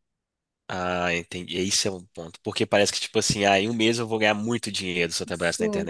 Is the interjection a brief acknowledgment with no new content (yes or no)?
no